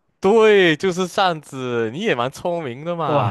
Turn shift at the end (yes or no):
yes